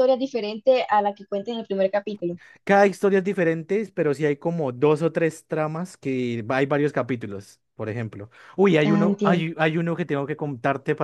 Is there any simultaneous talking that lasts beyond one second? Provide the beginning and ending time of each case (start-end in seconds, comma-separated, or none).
none